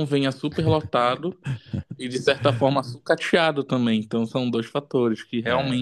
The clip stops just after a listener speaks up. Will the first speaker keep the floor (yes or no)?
yes